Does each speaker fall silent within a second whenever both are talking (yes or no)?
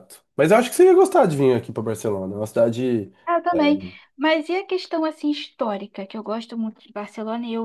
yes